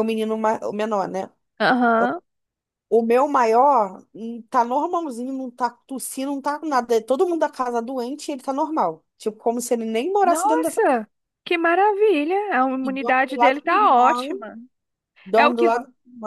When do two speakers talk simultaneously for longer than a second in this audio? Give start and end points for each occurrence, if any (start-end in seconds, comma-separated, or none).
12.8-14.3